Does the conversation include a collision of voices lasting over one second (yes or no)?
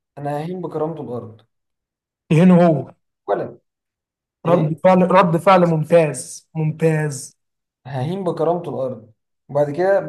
no